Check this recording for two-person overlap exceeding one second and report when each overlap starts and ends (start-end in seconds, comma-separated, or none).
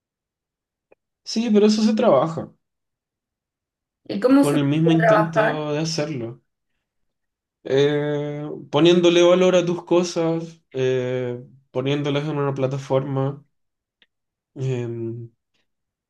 4.4-5.7